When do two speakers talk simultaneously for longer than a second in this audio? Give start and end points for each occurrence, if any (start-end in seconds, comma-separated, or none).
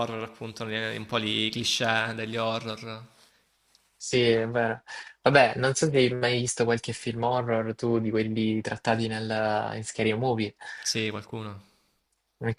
none